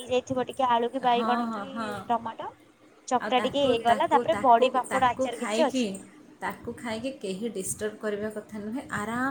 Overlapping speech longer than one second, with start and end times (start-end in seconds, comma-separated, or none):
3.2-5.8